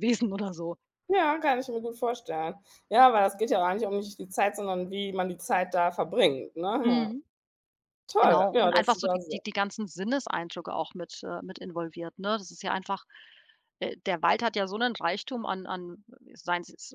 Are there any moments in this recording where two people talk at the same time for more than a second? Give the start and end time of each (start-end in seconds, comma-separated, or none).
8.2-9.4